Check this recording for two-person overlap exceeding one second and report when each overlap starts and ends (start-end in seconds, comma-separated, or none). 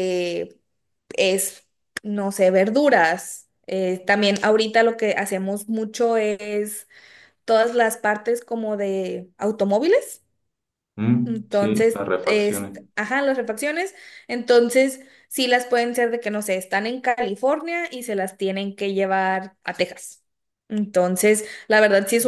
11.2-12.8